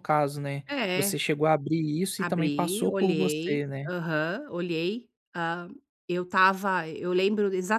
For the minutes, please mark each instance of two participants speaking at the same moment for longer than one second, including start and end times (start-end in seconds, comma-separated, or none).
2.2-3.9